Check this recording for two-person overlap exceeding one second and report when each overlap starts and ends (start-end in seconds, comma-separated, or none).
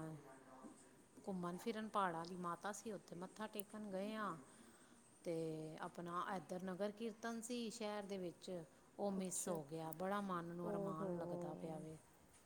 10.7-11.8